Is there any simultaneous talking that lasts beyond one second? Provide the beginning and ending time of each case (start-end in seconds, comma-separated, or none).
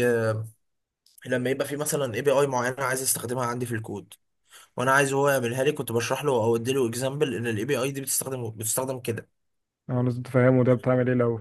none